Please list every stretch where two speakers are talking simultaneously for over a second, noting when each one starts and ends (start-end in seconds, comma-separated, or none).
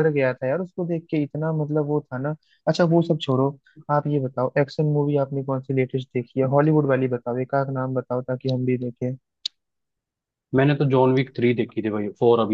none